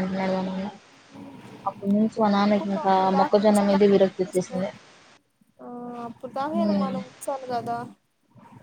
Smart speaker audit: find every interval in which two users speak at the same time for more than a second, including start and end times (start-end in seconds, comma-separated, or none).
2.4-4.6